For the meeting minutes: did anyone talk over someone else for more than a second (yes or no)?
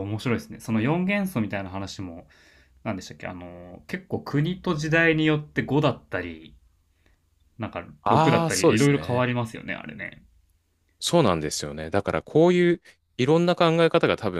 yes